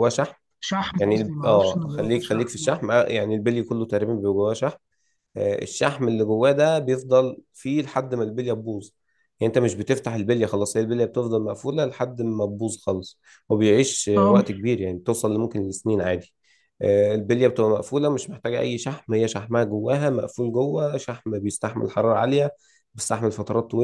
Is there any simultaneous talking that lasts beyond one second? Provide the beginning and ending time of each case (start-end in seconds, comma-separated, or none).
0.9-2.8